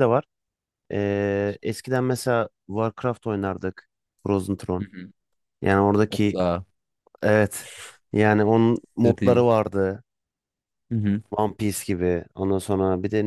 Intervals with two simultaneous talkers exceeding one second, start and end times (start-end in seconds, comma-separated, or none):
none